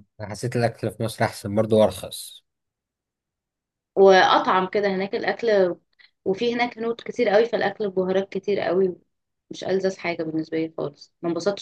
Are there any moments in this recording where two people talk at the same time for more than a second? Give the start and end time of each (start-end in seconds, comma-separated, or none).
none